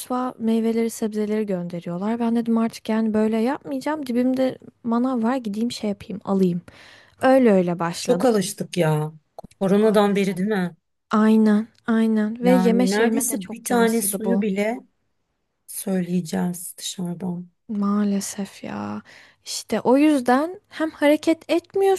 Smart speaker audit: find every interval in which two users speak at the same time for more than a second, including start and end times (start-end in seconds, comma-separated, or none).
12.4-14.4